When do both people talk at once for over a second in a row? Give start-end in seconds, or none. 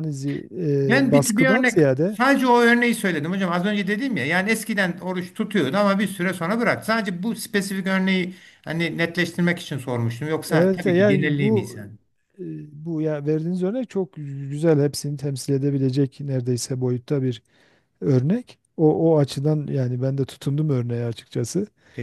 0.8-2.2, 10.5-11.8